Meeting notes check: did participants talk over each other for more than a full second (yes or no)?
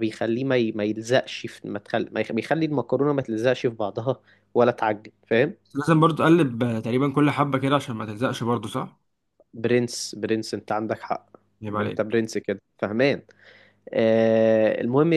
no